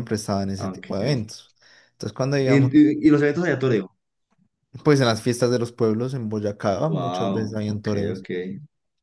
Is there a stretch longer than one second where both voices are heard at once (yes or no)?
yes